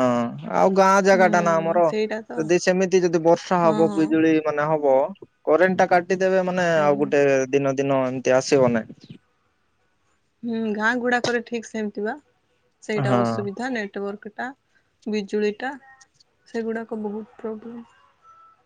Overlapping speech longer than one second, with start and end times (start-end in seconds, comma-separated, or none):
none